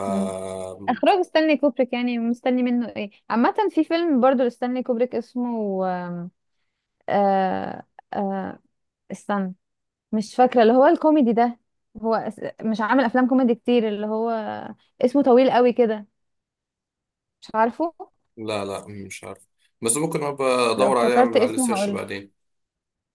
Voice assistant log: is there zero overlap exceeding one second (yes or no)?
no